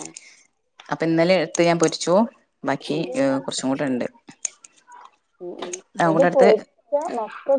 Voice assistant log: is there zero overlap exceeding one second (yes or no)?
yes